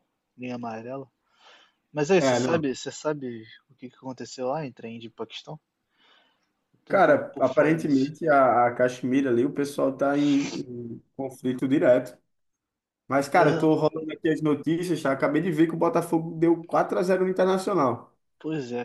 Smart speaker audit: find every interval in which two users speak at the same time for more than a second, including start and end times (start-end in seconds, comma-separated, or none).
6.9-8.1